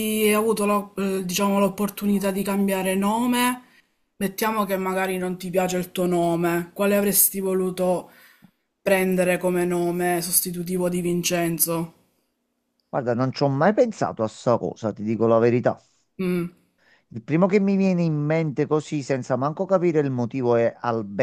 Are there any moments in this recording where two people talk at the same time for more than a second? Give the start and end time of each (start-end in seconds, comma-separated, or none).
none